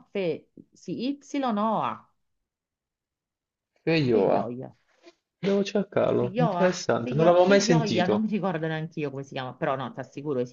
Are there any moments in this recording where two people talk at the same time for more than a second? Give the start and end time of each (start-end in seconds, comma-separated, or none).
6.2-8.3